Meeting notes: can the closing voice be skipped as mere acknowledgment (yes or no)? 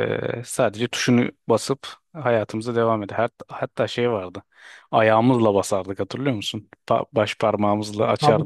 no